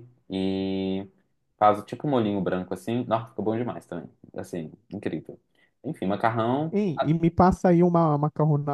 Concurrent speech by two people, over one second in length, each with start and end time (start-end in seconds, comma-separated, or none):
none